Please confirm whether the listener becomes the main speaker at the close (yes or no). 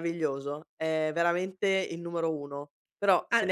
no